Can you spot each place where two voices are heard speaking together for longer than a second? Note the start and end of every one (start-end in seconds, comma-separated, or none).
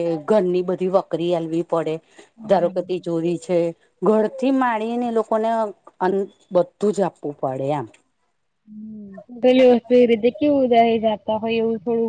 none